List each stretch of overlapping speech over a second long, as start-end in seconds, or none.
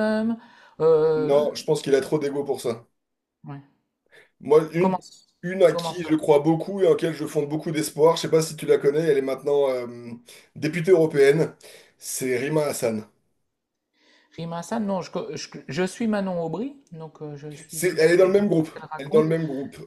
17.7-19.3